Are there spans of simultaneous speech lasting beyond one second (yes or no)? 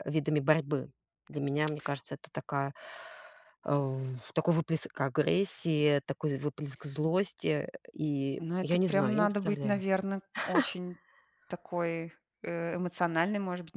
yes